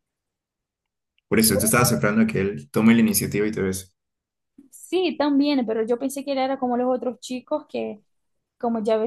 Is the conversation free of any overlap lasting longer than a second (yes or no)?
yes